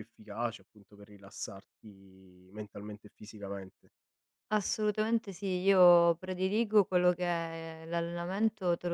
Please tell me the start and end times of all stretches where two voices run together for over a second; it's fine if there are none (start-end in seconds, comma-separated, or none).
none